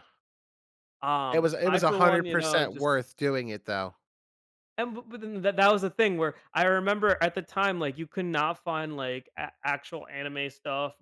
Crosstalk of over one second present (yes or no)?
yes